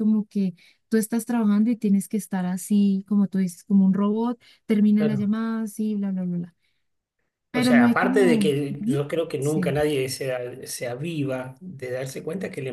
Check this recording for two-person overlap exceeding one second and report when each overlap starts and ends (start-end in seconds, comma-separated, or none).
7.5-9.7